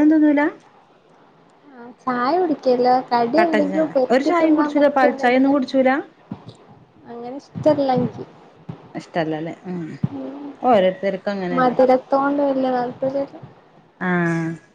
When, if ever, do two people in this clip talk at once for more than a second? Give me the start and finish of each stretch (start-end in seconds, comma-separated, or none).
3.4-5.6